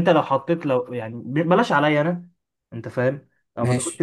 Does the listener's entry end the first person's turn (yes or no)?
no